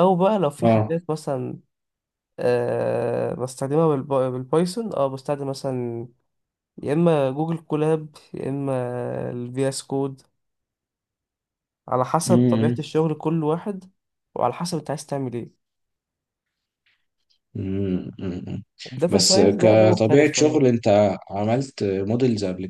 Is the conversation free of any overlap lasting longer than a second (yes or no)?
no